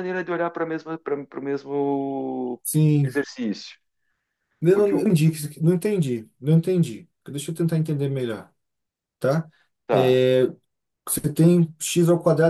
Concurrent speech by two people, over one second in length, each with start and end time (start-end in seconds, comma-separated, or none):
none